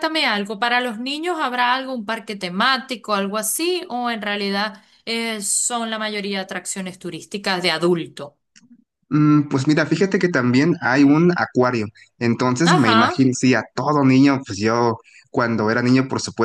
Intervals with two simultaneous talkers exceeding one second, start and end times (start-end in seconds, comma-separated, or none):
none